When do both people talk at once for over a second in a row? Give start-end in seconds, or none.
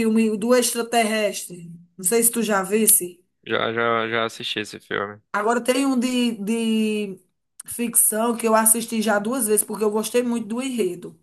none